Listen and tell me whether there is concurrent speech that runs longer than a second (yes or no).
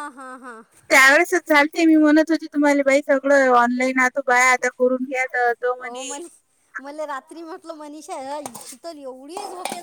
no